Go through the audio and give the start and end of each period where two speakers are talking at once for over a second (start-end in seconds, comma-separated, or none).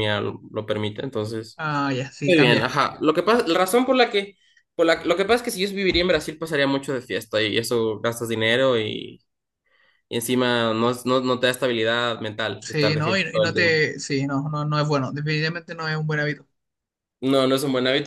12.6-13.9